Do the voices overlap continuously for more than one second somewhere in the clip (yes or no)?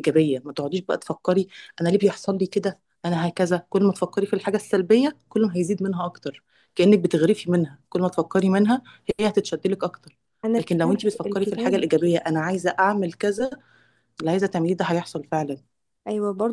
yes